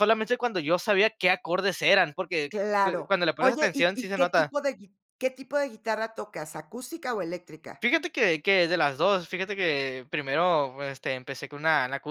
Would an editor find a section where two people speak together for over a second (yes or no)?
yes